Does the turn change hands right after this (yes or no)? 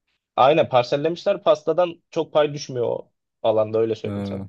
no